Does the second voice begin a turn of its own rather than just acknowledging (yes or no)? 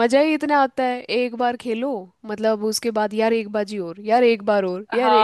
yes